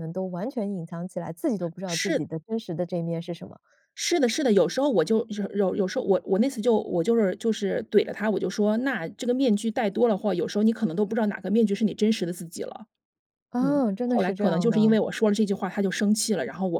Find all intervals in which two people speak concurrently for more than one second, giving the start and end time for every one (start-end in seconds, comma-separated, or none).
13.6-15.0